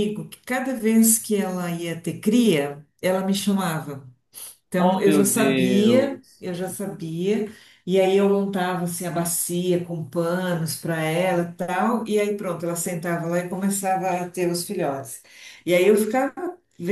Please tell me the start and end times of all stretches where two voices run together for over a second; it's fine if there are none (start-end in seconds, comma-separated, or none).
4.8-6.4